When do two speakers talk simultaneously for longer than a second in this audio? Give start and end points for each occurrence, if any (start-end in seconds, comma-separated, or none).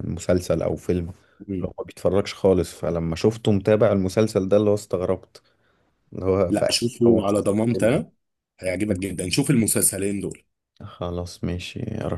6.5-8.0